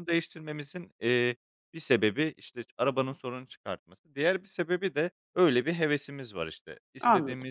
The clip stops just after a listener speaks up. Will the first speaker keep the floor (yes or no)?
yes